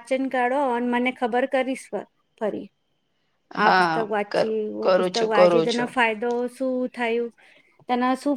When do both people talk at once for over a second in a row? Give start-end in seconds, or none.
3.6-5.9